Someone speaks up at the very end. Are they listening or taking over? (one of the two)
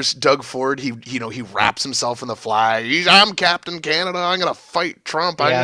taking over